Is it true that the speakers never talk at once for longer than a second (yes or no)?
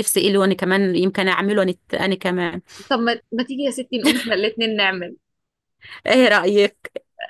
yes